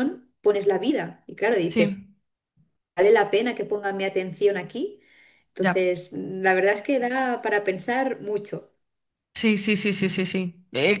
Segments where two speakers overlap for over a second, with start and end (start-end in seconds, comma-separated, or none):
none